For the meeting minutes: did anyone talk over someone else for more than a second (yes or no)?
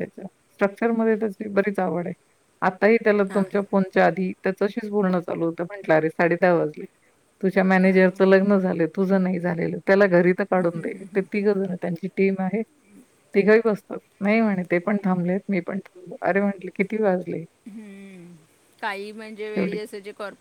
no